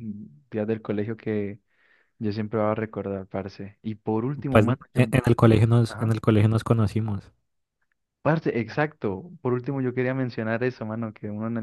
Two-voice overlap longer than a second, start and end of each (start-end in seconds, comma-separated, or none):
none